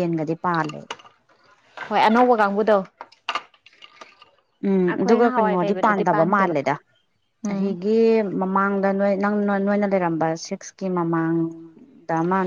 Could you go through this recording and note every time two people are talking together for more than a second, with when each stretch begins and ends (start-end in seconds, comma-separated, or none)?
4.9-6.5